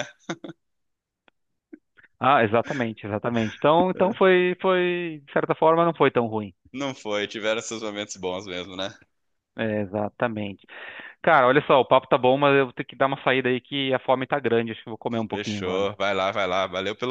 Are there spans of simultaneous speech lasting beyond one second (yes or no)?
no